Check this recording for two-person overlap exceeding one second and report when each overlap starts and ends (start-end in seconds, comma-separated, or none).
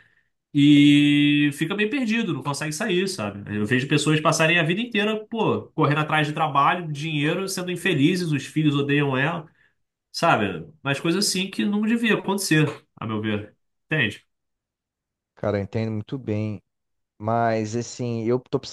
none